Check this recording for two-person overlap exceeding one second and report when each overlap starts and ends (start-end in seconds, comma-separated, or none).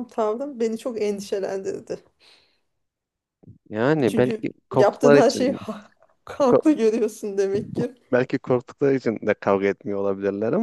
4.1-5.6